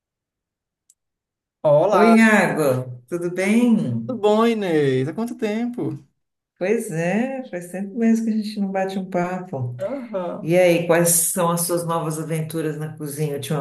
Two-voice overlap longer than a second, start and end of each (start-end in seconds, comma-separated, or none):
none